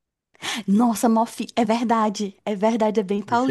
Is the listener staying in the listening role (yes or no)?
no